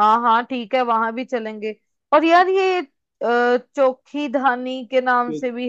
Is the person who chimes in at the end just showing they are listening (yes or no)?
no